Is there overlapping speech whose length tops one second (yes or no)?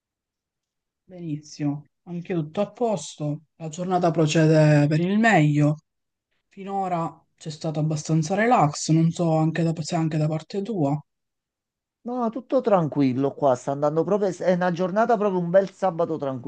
no